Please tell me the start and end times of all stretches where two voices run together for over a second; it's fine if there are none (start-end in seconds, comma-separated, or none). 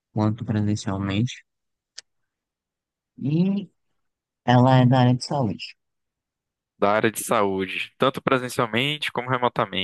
none